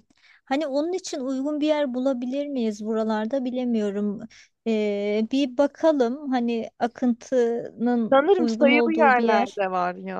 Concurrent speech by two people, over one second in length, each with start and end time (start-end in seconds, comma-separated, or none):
8.1-9.6